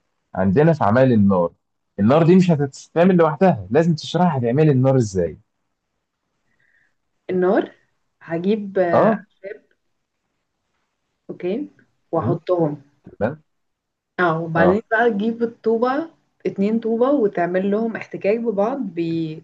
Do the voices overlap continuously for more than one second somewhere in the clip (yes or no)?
no